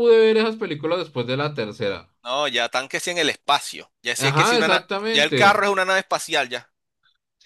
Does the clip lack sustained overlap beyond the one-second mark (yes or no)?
no